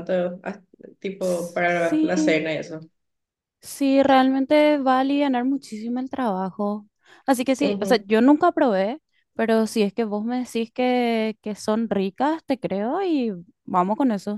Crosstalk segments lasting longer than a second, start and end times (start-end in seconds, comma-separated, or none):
1.2-2.4